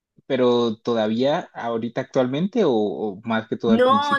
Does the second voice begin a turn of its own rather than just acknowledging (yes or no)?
yes